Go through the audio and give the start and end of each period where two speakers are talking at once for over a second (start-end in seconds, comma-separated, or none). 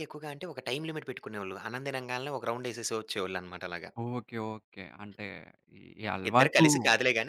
none